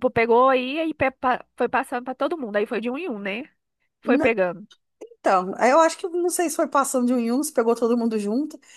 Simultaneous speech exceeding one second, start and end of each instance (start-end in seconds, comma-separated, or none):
none